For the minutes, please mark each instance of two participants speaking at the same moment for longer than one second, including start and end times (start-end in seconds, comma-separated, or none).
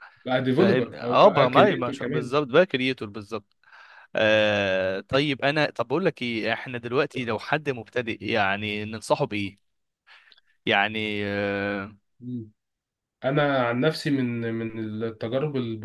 0.6-2.0